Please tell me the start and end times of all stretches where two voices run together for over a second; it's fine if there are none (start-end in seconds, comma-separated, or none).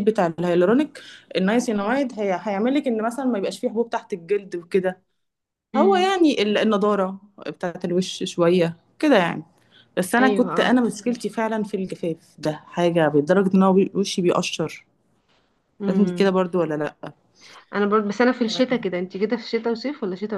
none